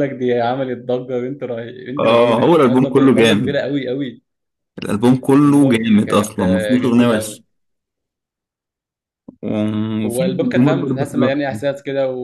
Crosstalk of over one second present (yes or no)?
yes